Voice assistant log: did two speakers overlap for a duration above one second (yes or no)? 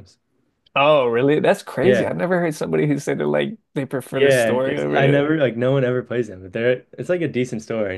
yes